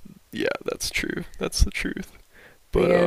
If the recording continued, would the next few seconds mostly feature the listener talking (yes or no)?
yes